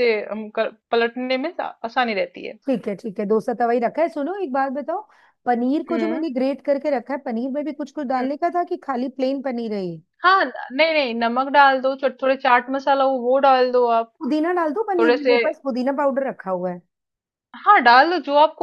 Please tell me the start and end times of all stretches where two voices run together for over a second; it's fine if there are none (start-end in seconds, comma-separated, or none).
none